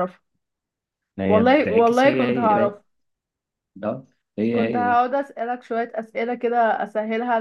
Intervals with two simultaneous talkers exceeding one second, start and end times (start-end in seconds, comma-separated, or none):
1.3-2.8